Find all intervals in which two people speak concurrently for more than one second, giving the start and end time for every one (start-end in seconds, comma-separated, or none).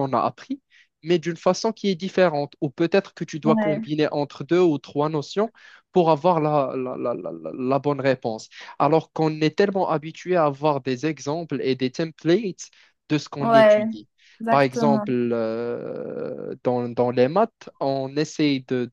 none